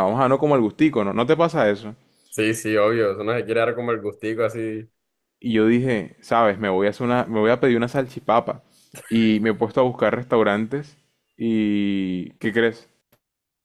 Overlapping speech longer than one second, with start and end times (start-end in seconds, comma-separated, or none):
none